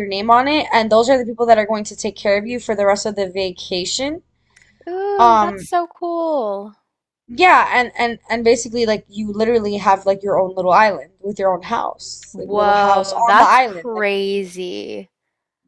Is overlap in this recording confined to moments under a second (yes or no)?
no